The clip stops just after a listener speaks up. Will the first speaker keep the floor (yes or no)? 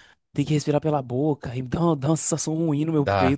no